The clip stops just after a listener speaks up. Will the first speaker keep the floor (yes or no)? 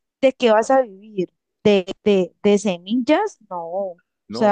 no